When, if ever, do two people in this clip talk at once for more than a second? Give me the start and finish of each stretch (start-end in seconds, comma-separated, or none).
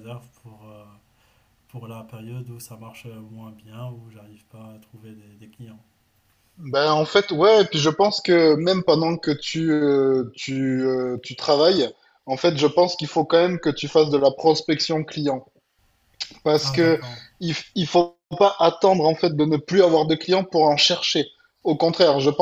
none